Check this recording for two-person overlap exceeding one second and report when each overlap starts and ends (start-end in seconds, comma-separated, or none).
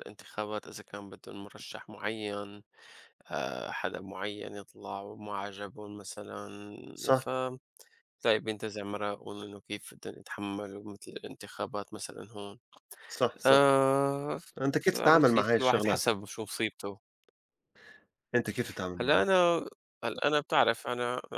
14.8-16.1